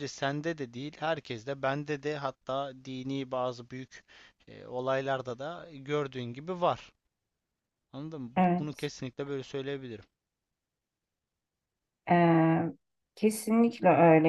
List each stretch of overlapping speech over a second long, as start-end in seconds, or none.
none